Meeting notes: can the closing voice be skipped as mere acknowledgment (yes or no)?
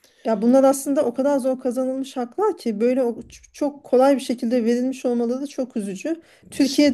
yes